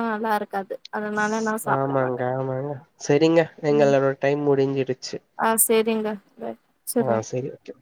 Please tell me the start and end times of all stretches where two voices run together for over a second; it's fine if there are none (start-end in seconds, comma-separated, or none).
none